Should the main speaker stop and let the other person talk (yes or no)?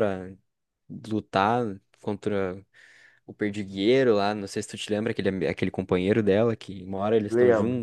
no